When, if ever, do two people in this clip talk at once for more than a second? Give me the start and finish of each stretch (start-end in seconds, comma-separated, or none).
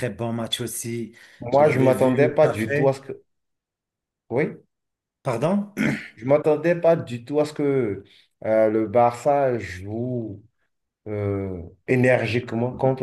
1.5-2.9